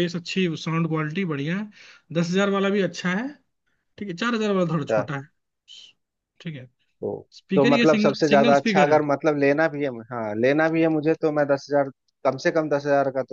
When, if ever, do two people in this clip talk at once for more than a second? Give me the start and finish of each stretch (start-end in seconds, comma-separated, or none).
7.4-9.0